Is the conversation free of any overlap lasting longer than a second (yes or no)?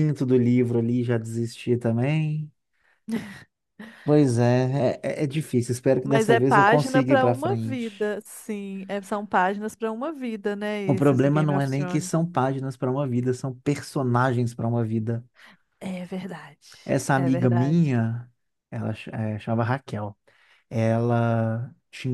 no